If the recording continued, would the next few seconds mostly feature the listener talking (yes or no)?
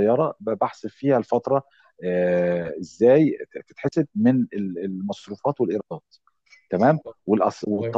no